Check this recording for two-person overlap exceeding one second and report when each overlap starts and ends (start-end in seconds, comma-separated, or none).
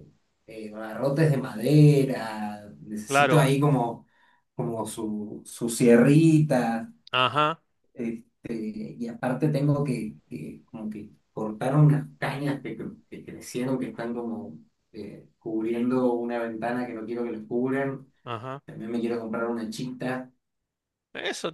none